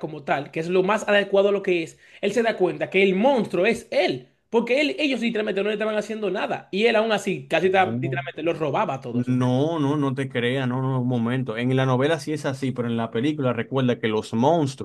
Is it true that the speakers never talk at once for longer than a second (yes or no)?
yes